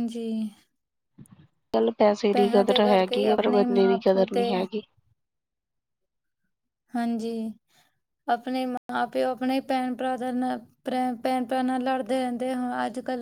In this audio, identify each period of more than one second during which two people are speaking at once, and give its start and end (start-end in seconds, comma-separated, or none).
2.3-4.4